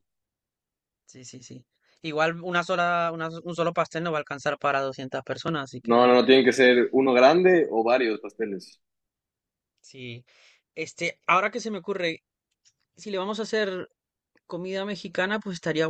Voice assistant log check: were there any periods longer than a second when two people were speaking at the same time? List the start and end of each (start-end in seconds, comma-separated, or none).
none